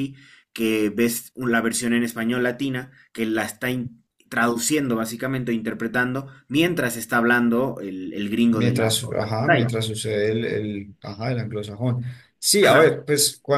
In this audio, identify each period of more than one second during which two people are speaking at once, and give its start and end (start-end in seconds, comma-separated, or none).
8.5-9.7